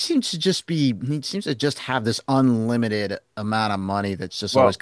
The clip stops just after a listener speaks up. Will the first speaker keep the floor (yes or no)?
yes